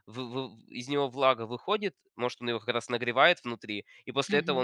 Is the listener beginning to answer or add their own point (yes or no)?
no